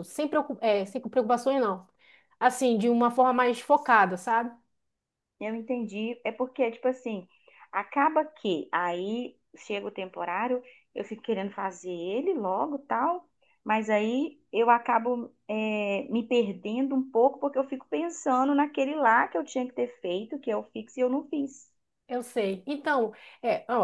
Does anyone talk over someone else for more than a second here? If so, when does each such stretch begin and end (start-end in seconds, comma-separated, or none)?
none